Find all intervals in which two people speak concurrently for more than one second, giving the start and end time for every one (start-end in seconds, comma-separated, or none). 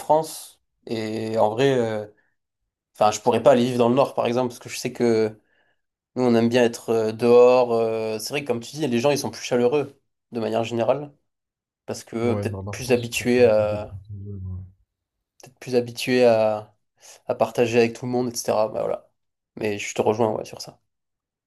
12.2-14.0